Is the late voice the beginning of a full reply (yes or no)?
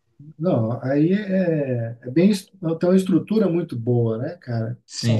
no